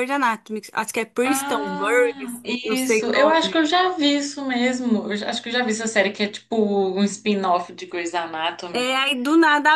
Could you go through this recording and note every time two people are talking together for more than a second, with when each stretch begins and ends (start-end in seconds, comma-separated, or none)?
1.2-3.5